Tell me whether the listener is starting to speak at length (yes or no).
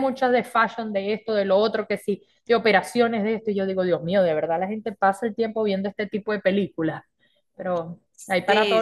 yes